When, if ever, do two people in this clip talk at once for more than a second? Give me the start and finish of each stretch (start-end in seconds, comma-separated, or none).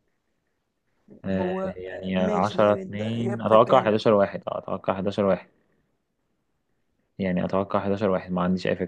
1.2-3.9